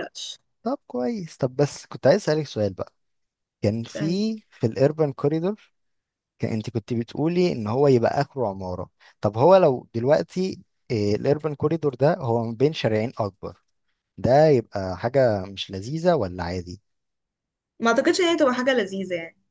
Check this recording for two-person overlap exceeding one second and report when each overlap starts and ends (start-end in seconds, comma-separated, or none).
none